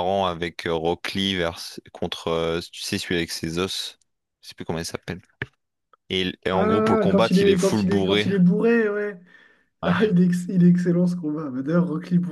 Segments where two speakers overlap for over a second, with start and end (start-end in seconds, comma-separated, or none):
6.5-8.3